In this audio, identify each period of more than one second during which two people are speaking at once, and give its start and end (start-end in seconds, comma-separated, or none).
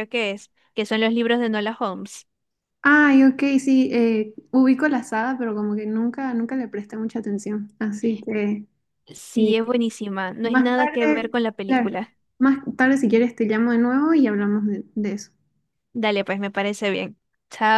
10.4-11.9